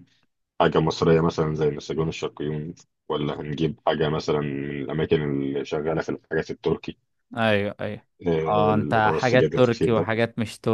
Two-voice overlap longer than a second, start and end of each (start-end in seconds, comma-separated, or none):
8.5-10.1